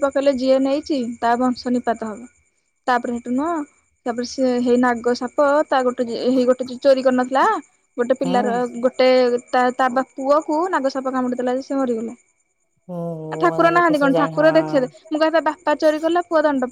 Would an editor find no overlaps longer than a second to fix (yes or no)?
no